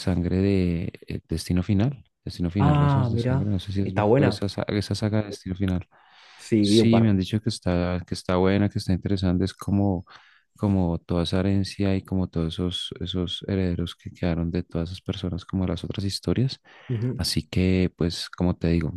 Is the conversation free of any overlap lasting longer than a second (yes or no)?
no